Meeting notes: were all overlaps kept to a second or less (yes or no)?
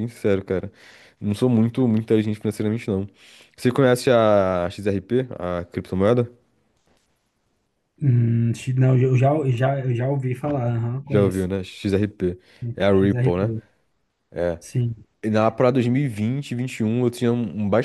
yes